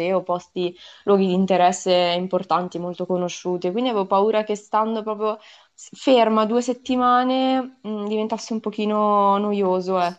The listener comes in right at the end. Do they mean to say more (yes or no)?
yes